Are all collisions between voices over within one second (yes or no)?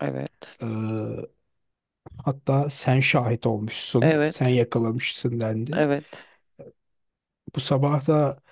yes